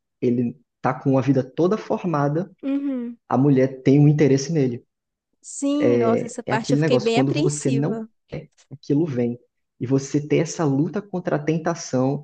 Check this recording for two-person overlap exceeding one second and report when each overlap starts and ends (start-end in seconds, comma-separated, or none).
6.5-8.1